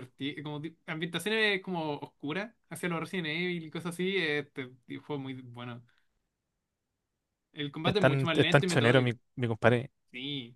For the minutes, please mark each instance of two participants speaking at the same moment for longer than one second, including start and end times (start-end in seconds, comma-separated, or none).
7.8-9.2